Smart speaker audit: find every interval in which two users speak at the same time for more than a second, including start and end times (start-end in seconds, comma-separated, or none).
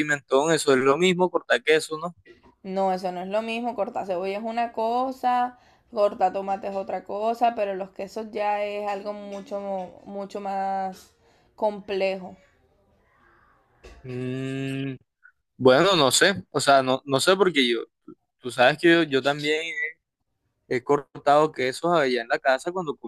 none